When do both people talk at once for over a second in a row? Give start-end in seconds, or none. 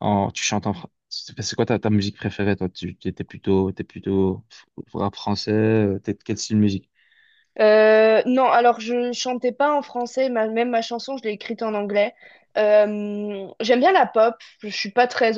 none